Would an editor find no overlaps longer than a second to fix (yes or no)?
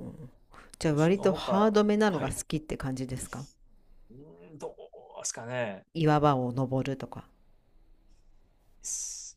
no